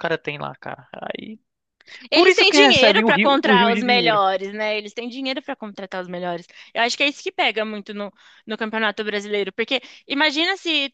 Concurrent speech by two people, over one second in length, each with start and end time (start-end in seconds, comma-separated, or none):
2.1-4.2